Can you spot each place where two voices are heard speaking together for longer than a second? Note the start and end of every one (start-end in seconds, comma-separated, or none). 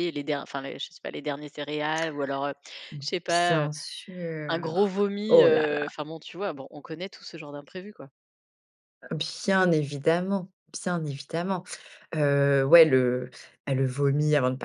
4.5-5.9